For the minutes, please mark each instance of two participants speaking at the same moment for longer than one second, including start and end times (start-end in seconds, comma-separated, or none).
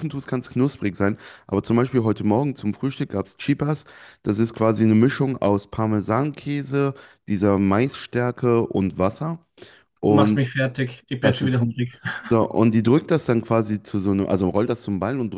none